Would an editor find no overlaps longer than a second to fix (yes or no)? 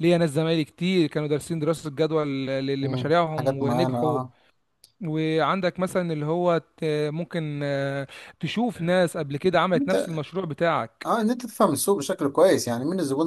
no